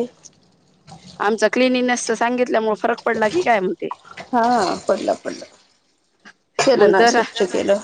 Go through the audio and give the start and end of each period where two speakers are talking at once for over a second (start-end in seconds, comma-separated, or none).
none